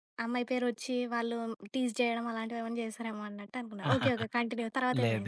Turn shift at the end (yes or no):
yes